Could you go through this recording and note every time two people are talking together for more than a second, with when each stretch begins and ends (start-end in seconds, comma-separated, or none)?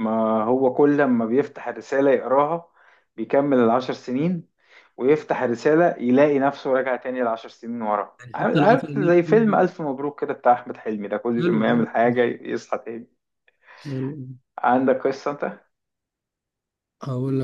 8.2-9.6